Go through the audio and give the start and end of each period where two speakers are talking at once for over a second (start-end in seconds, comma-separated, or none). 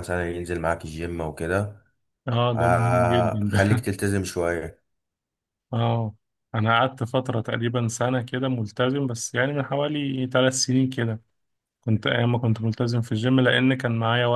2.5-3.8